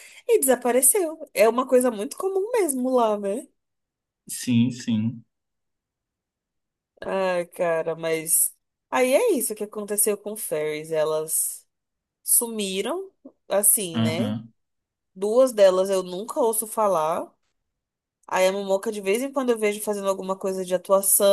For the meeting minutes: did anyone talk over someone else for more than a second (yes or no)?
no